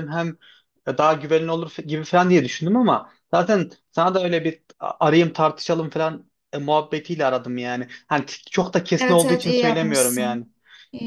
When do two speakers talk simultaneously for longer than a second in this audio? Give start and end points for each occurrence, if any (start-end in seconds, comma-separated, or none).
9.0-10.5